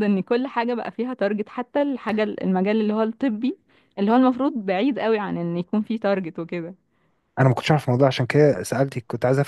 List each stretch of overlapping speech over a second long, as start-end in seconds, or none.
none